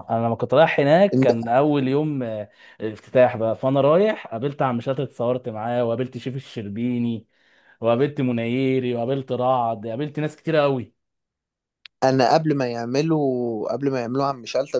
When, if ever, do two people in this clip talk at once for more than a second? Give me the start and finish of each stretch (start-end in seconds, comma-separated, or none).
none